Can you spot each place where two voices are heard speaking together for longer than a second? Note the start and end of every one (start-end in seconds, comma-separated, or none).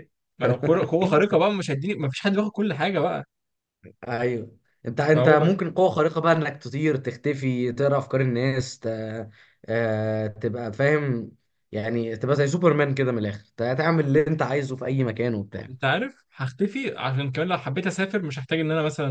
none